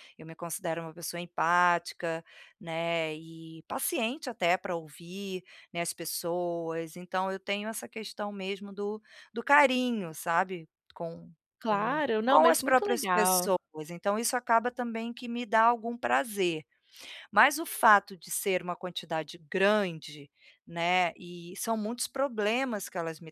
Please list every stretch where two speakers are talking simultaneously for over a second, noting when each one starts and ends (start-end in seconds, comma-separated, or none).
11.6-13.5